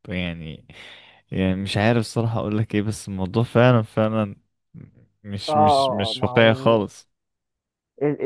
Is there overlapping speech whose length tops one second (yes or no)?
yes